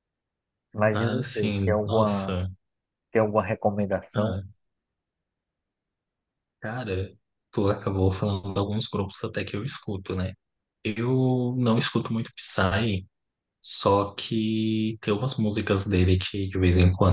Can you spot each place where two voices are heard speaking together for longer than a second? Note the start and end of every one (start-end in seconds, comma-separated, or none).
0.9-2.4